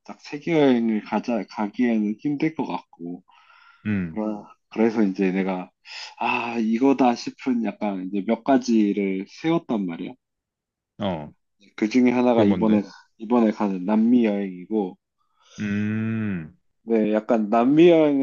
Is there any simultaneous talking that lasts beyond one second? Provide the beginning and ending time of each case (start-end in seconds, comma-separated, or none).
none